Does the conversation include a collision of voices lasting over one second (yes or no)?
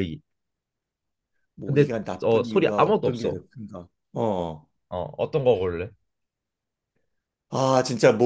yes